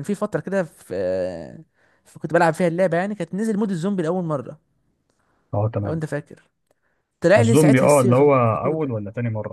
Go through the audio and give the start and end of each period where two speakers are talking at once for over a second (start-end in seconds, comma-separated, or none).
7.4-8.9